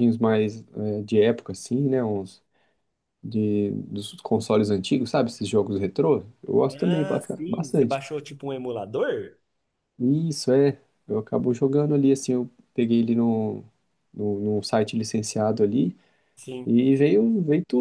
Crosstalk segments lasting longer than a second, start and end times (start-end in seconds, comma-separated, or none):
6.7-8.0